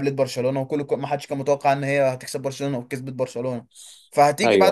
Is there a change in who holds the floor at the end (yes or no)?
no